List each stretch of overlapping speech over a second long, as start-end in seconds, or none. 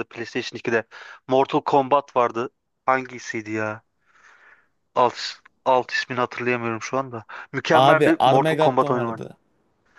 7.7-9.2